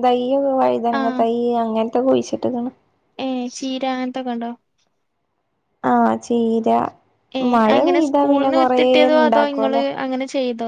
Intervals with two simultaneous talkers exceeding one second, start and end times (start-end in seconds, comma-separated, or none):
7.5-9.8